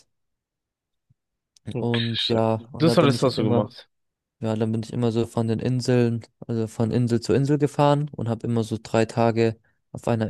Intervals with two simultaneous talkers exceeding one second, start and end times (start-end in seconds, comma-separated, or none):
1.8-3.7